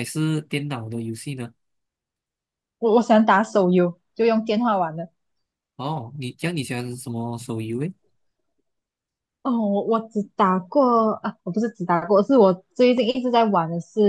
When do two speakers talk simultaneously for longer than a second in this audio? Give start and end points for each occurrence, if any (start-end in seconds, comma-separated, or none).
none